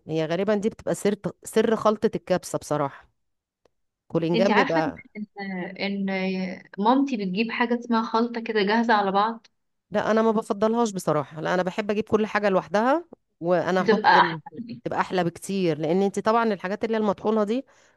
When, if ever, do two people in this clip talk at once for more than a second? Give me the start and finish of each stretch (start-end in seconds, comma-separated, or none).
none